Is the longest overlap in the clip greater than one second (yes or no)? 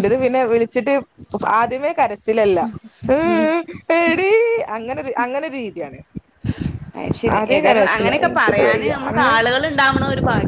yes